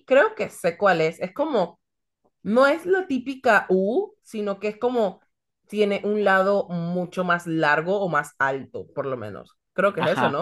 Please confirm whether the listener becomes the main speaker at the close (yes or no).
yes